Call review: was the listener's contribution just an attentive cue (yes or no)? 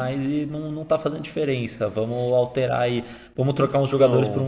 yes